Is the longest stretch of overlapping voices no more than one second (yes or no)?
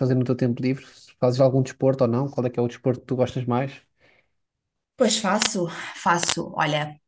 yes